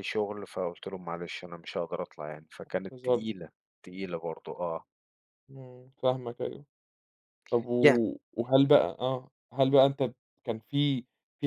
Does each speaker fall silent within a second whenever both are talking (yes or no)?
yes